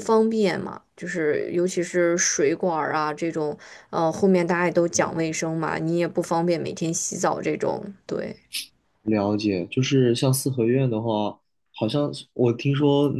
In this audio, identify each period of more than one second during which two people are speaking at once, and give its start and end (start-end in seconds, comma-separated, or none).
none